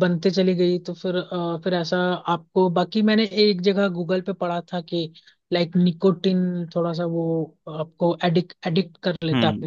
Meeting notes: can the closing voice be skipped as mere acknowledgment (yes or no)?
no